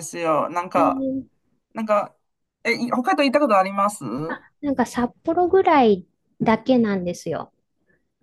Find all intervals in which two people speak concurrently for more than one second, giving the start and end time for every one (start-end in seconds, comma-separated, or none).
none